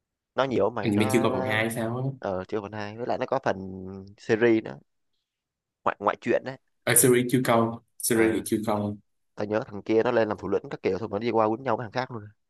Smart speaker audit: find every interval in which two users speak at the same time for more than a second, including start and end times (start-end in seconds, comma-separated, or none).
none